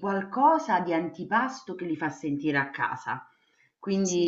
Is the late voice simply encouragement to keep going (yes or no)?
yes